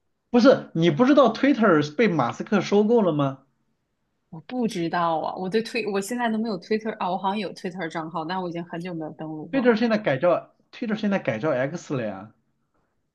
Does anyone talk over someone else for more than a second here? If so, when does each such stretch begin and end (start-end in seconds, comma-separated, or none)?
none